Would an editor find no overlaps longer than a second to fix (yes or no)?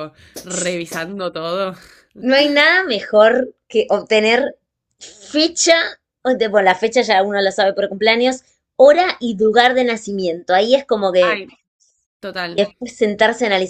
yes